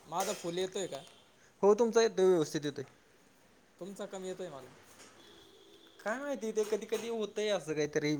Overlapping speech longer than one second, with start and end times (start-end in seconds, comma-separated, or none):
none